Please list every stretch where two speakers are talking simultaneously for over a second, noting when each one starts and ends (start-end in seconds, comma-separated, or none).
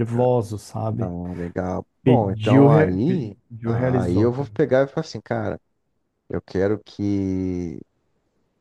2.0-4.5